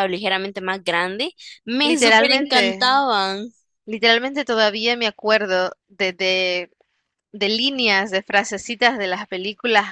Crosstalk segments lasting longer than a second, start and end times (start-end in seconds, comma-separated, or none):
1.8-3.0